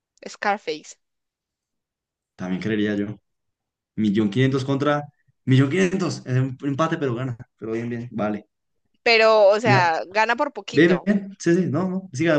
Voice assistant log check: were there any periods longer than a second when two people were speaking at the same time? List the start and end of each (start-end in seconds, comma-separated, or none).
none